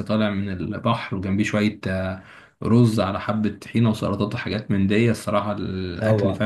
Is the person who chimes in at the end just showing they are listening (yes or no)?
no